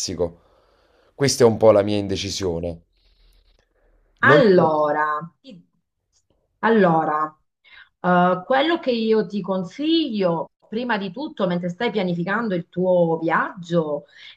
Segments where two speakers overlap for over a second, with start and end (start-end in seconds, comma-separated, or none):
none